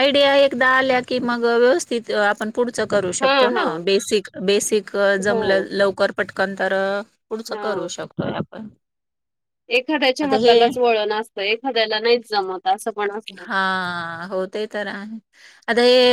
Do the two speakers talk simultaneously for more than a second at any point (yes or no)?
no